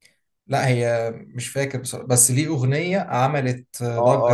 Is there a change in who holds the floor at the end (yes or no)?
yes